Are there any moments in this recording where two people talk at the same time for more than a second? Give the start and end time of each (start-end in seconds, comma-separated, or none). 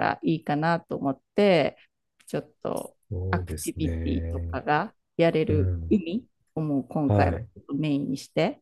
3.1-4.5